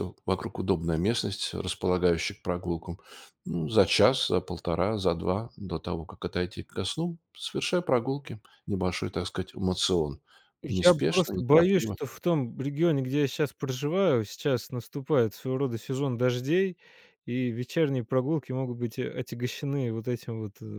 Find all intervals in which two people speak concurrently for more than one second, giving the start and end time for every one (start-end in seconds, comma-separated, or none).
10.7-12.0